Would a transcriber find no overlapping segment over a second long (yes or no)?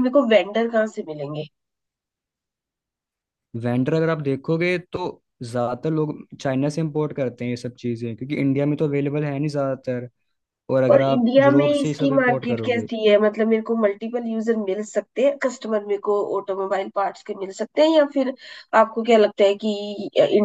no